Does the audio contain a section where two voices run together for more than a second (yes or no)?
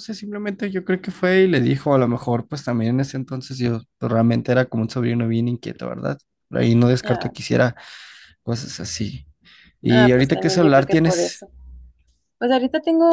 yes